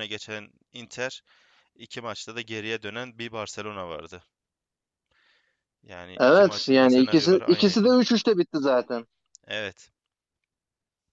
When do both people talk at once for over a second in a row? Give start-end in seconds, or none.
6.2-8.0